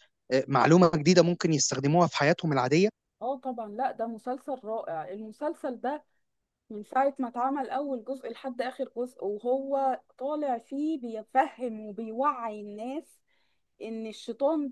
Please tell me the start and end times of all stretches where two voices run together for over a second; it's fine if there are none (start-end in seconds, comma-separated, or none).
none